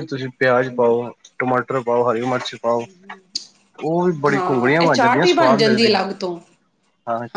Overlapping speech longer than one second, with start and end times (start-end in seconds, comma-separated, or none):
4.3-5.9